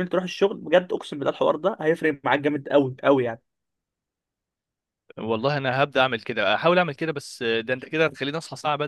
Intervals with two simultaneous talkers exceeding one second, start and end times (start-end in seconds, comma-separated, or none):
none